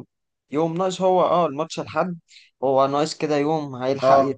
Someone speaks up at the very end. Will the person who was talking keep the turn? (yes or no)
yes